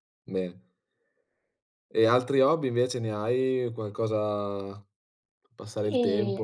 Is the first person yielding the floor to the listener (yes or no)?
yes